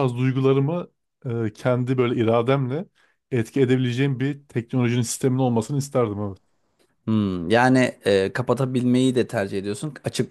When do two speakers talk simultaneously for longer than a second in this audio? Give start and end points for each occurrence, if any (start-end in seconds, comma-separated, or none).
none